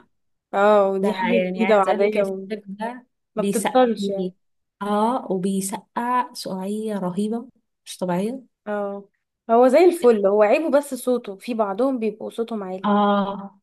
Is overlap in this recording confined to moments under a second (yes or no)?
no